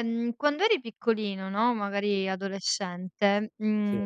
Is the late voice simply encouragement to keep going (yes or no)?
yes